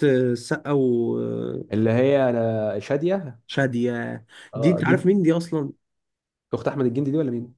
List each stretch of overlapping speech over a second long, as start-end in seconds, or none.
none